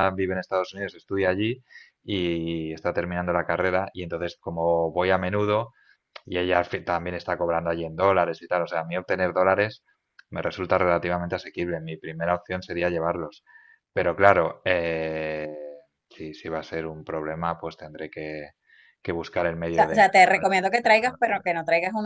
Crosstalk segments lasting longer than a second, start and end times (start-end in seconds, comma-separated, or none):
19.7-21.5